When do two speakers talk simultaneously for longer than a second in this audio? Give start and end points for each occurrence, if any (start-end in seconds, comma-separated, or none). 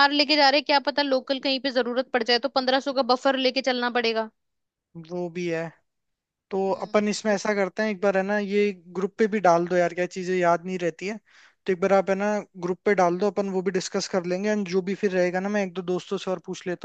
none